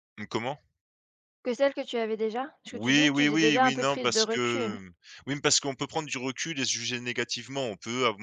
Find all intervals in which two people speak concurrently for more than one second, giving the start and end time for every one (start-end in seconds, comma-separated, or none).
2.7-4.8